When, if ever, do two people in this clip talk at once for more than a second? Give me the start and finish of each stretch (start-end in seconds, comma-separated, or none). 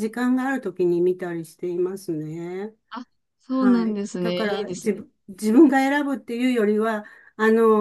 3.5-5.0